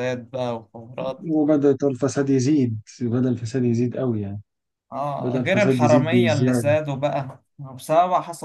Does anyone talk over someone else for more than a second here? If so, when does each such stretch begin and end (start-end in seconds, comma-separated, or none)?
5.2-6.8